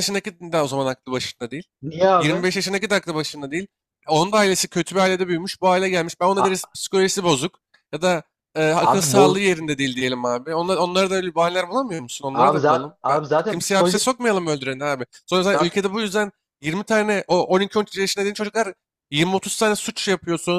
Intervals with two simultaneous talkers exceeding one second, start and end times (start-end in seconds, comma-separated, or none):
12.3-14.1